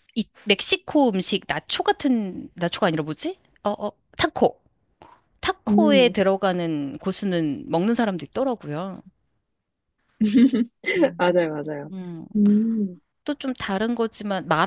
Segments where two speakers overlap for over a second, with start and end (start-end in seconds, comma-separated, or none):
none